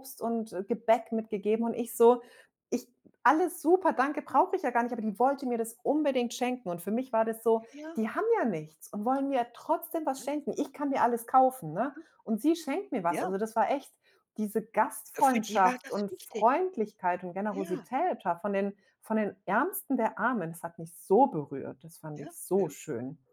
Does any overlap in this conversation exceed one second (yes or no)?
yes